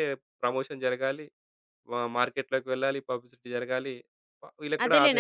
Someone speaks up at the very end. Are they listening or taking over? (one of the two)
taking over